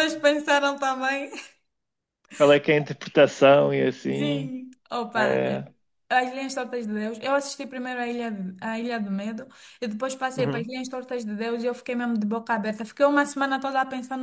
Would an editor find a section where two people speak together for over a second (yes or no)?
no